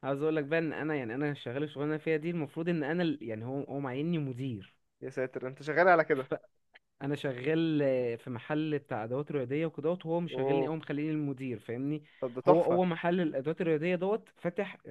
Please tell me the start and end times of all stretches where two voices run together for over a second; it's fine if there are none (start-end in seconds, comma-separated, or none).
none